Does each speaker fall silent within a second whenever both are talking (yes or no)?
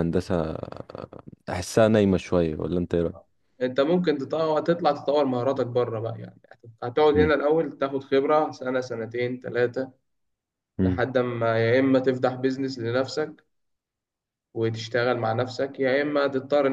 yes